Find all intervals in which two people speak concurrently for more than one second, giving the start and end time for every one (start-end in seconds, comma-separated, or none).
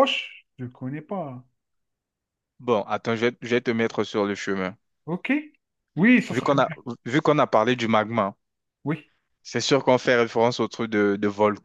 none